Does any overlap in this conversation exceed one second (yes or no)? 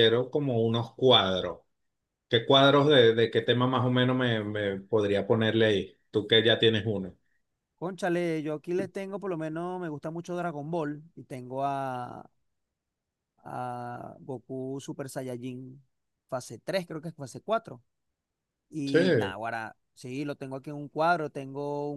no